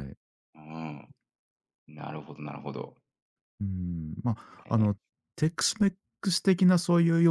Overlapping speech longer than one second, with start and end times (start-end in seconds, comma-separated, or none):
none